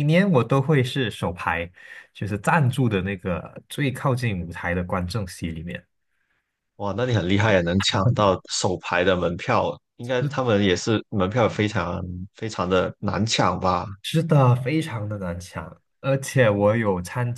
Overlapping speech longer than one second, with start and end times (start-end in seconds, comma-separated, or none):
none